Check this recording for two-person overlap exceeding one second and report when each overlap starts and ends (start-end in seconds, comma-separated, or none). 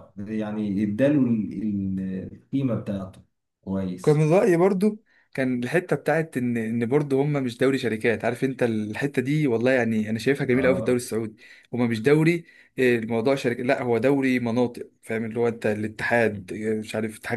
none